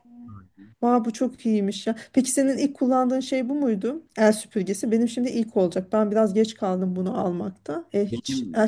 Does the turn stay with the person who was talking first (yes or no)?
yes